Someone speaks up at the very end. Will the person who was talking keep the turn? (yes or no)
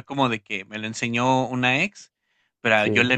yes